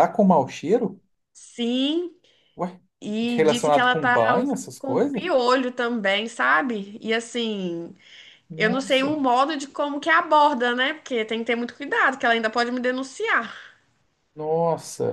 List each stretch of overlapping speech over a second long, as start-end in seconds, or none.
3.4-5.2